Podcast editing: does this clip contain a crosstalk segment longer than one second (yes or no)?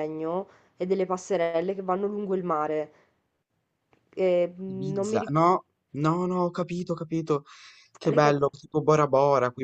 no